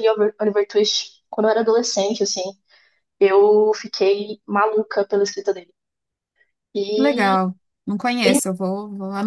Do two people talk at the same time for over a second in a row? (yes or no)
no